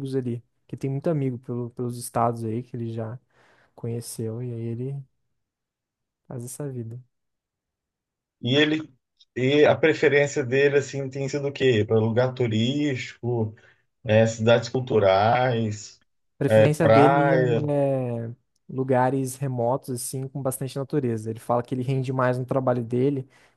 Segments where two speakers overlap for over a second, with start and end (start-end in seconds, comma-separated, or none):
16.5-17.7